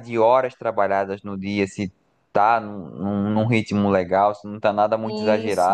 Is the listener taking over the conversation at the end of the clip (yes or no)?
yes